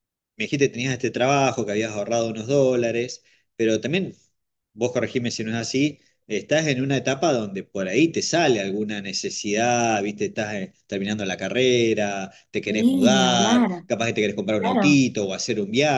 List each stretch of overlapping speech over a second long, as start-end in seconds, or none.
12.7-13.8